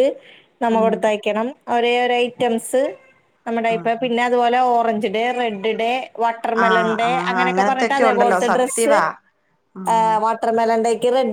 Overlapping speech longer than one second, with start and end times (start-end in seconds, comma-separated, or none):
6.7-8.9